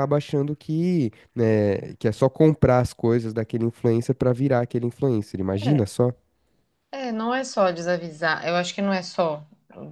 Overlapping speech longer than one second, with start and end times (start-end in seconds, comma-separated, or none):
none